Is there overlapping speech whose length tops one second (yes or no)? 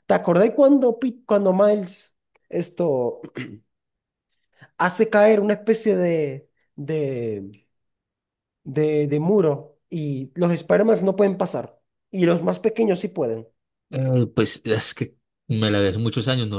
no